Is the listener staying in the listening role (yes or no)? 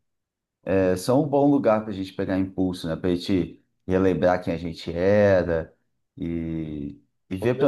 yes